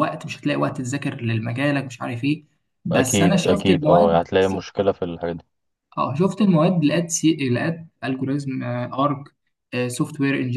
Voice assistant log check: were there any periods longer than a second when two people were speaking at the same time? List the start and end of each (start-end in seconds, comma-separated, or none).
2.9-4.2